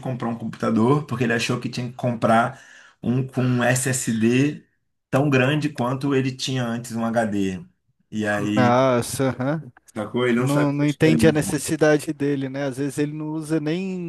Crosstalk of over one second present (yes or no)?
yes